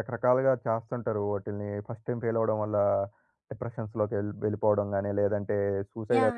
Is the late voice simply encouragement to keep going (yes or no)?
no